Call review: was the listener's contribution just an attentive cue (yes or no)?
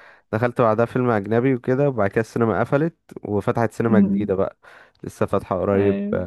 no